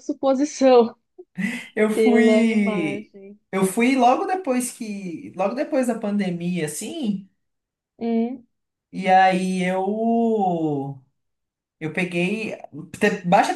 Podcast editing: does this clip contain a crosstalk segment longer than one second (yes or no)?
yes